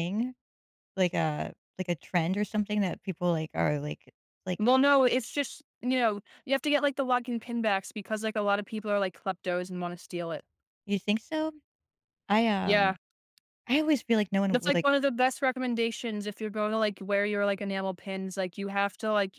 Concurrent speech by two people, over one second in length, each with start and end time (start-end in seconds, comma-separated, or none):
none